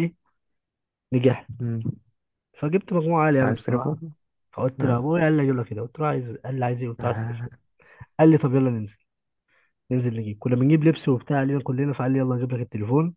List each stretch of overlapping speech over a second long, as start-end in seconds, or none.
none